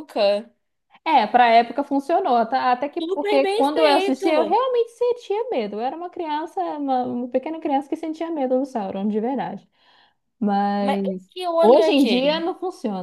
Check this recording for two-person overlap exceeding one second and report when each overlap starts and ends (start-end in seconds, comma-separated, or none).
3.0-4.6, 10.8-12.4